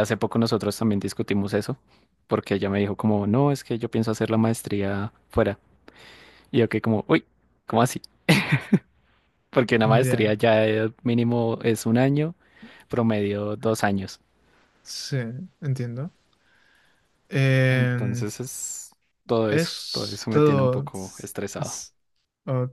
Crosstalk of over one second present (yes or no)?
yes